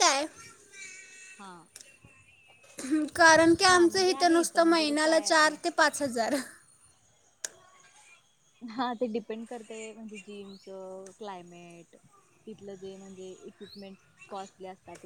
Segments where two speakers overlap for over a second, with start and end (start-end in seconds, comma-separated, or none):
3.7-5.5